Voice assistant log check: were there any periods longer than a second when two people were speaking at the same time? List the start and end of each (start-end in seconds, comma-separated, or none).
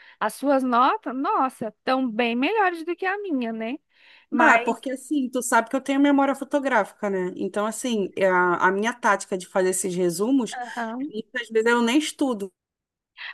none